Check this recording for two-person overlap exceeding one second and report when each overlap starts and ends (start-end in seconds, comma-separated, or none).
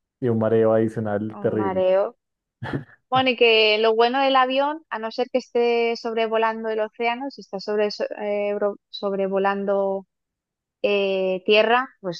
none